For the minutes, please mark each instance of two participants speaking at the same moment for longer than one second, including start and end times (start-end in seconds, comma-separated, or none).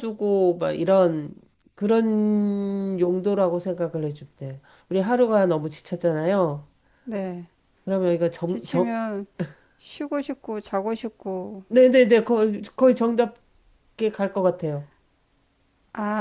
none